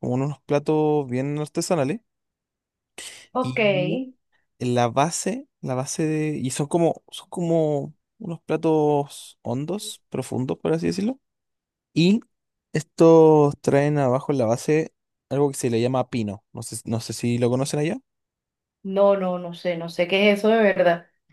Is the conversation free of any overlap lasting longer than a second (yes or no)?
yes